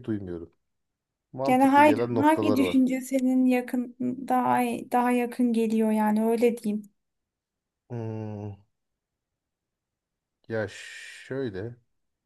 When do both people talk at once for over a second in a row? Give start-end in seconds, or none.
1.5-2.8